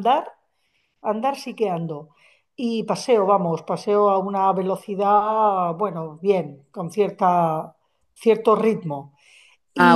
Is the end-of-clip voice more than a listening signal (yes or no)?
yes